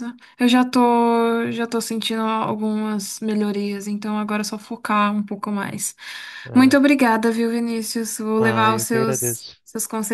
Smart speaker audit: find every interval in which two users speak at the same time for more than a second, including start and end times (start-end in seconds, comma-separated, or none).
8.4-9.6